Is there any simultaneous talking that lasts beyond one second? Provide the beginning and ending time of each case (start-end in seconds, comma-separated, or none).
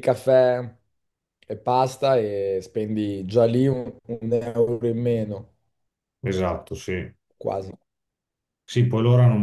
none